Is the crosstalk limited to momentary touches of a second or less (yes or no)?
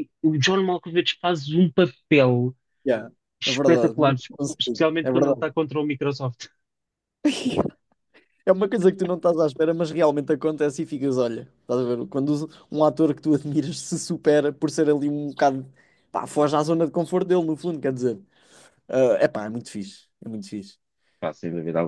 no